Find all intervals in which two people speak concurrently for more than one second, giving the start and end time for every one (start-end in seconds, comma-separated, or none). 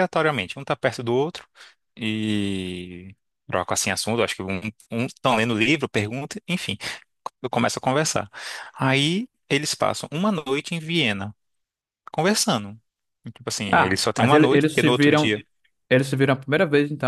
13.7-15.3